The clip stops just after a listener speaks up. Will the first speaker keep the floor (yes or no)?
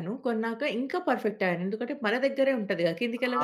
no